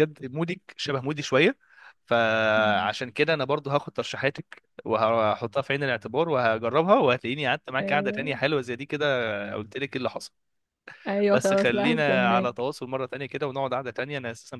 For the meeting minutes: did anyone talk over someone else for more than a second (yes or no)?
yes